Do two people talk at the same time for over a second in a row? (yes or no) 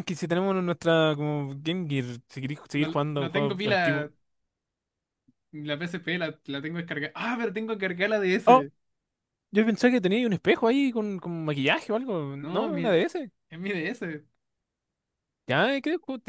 yes